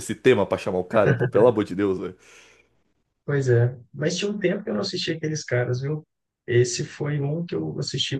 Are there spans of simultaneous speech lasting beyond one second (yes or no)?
no